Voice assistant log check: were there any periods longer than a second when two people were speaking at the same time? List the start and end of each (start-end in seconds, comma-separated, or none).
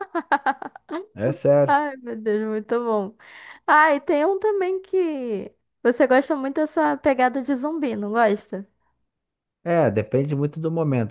none